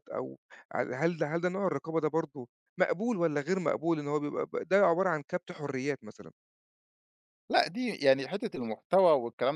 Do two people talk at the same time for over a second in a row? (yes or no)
no